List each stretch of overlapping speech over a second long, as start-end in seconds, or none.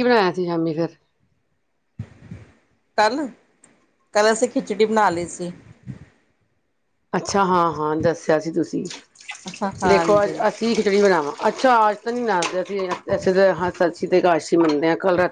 none